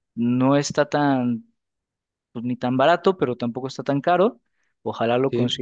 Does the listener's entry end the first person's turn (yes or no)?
no